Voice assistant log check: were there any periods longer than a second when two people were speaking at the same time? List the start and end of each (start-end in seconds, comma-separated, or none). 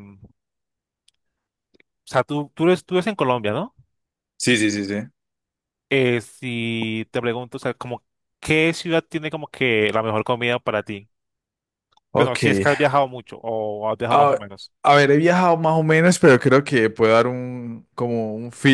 none